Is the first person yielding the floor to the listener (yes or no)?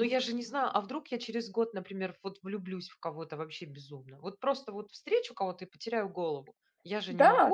yes